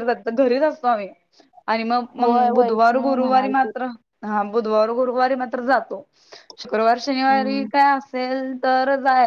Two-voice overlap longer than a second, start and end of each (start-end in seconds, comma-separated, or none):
2.2-3.7